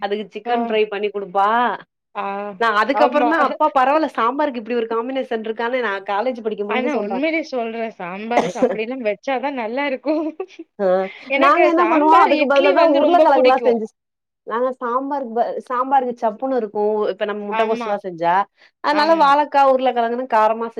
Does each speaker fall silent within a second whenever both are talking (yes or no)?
no